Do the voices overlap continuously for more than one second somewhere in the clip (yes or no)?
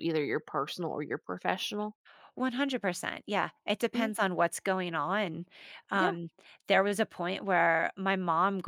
no